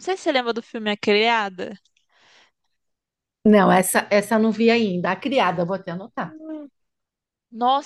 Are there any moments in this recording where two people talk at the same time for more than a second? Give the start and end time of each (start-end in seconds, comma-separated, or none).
none